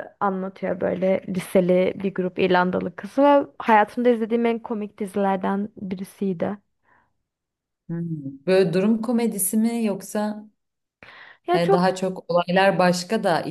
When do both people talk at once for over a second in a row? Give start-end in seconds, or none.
none